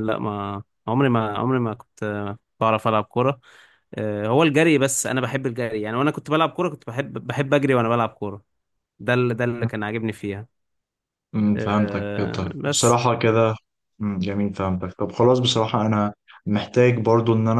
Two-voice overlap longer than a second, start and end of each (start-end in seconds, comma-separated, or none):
11.6-13.0